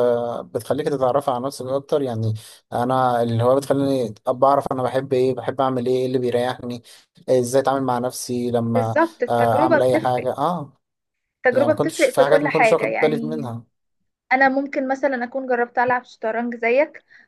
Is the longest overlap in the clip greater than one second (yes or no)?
yes